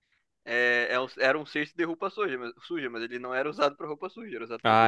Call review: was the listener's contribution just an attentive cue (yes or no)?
no